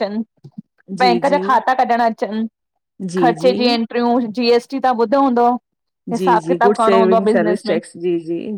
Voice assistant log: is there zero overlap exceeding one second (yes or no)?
no